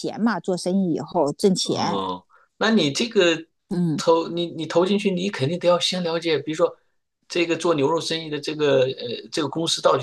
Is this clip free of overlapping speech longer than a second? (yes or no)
yes